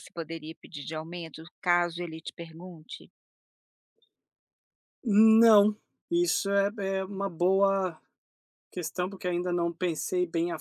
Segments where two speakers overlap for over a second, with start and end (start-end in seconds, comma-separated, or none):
none